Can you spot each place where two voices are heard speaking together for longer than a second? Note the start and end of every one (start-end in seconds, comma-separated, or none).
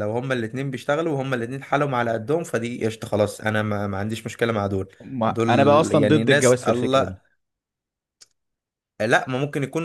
5.0-7.2